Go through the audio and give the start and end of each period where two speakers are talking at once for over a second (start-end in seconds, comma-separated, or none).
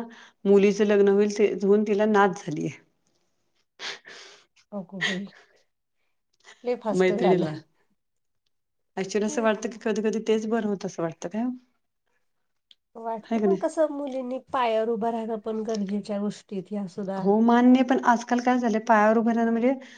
none